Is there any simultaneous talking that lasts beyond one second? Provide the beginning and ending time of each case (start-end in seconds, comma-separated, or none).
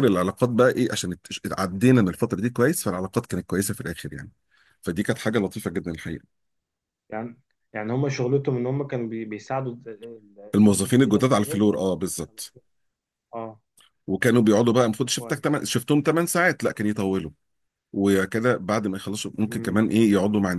10.5-11.9